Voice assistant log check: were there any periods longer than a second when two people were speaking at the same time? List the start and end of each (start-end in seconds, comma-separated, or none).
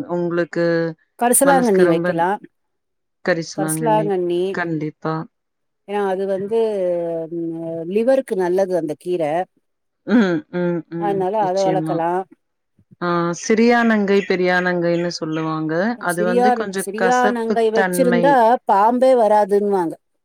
16.1-18.2